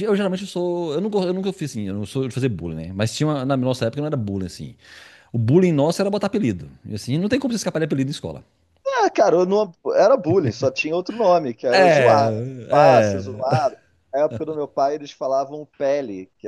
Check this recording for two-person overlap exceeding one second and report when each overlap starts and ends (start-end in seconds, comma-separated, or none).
11.7-13.6